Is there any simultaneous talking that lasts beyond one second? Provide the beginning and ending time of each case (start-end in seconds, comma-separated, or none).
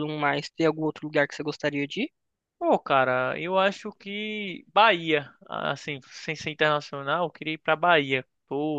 none